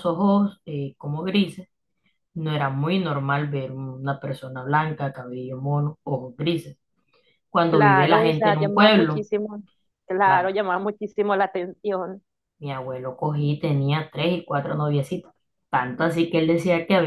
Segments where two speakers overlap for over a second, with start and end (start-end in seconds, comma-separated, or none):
7.7-9.3